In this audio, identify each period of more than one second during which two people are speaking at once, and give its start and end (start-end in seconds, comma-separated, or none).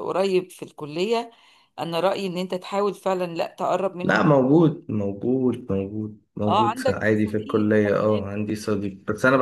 6.5-8.8